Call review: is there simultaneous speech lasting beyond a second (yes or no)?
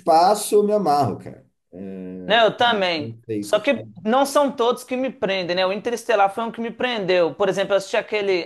yes